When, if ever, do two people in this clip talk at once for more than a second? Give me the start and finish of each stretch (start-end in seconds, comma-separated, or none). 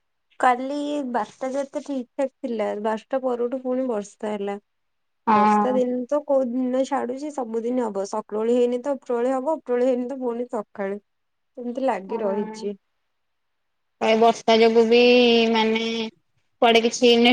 none